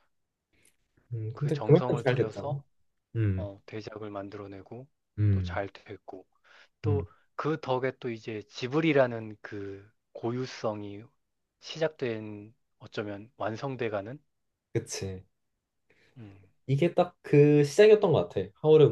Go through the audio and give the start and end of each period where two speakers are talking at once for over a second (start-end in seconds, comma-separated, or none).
1.3-2.6